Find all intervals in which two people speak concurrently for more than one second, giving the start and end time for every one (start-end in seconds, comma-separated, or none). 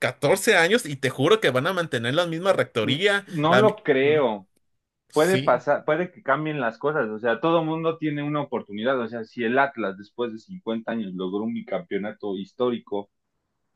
none